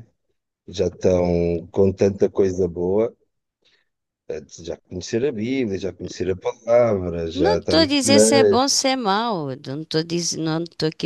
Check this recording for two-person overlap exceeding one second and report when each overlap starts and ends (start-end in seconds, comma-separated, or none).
7.3-8.7